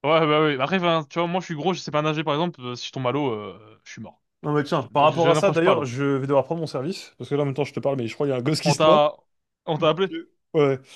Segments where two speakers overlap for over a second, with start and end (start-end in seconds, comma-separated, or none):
4.6-5.9